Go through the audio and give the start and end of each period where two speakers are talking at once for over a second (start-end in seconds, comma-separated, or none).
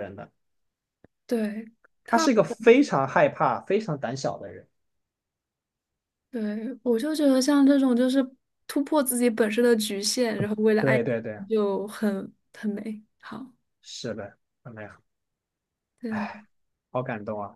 none